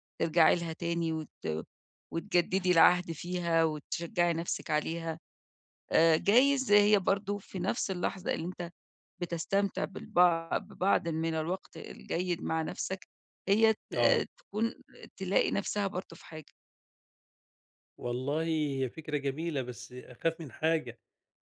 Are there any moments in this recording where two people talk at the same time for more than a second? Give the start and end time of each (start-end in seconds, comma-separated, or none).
none